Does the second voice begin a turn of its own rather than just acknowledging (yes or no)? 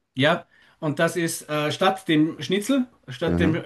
no